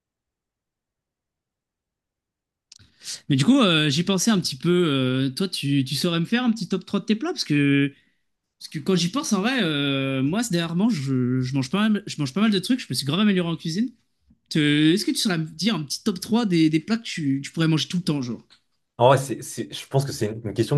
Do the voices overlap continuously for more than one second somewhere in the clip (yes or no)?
no